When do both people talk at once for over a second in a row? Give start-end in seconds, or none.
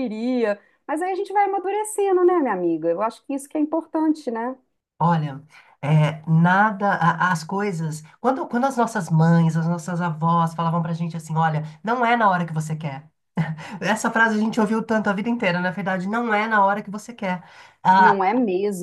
none